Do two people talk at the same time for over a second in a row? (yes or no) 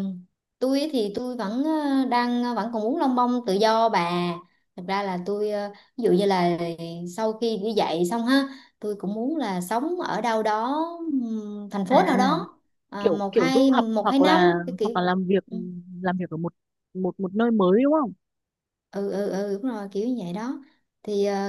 yes